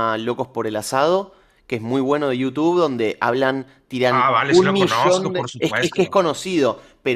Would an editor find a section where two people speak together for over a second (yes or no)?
yes